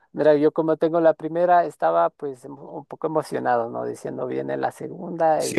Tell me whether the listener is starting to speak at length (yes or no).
yes